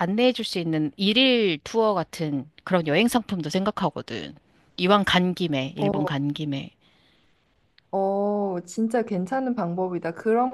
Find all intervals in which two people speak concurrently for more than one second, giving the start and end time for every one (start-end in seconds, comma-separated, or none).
none